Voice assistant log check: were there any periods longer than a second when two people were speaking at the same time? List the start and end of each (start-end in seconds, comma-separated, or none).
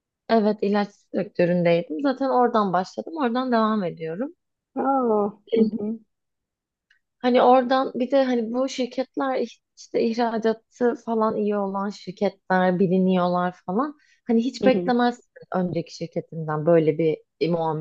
none